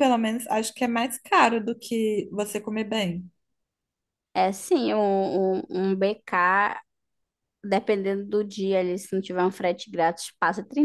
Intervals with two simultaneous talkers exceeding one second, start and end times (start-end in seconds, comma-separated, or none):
none